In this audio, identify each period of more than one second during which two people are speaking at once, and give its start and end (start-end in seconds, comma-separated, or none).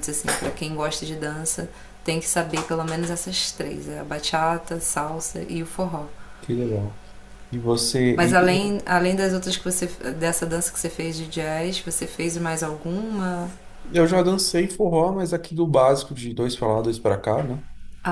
none